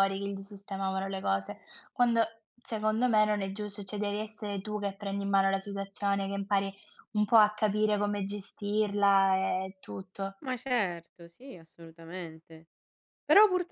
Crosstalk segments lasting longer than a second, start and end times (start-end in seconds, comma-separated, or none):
none